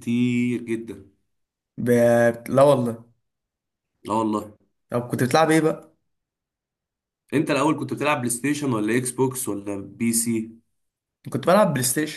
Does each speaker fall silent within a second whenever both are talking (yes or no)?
yes